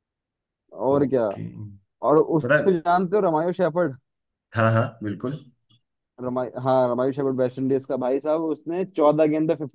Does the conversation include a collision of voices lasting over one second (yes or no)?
no